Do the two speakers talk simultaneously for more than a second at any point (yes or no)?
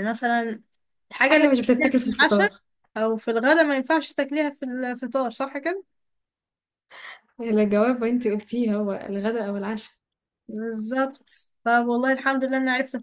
yes